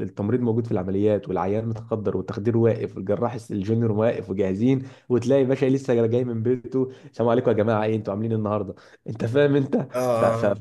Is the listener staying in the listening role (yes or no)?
yes